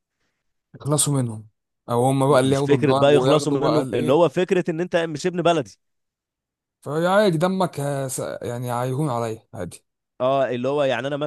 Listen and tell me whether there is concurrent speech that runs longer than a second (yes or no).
yes